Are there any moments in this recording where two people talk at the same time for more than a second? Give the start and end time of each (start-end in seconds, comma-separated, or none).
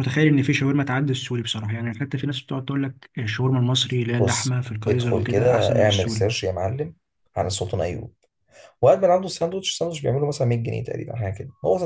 4.2-6.3